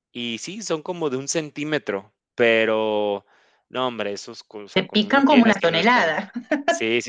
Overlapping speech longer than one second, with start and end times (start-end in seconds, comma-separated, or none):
4.7-6.2